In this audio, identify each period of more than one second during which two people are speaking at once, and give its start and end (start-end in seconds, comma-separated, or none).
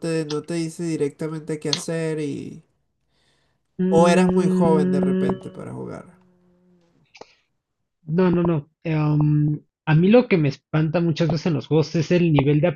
3.9-5.3